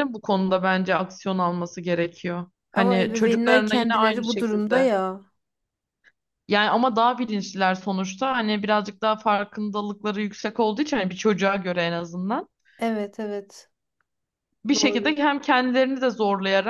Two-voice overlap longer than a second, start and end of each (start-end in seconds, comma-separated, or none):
2.7-4.9